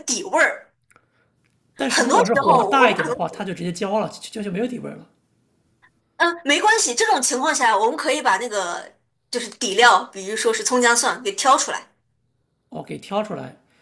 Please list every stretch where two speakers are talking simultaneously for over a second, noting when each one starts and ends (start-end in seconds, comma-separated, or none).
1.8-3.2